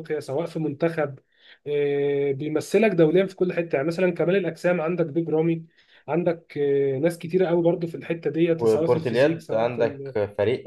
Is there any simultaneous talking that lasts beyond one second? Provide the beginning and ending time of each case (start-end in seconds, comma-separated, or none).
8.6-10.0